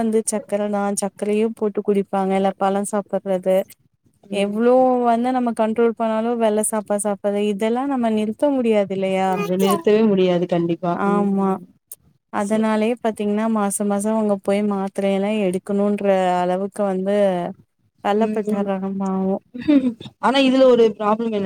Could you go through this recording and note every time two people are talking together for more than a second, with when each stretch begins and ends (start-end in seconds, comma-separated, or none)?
none